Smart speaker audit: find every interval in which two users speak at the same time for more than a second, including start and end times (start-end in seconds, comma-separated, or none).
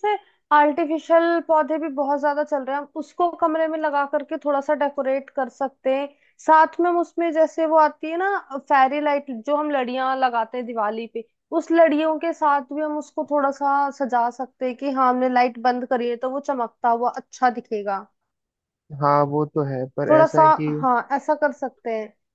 none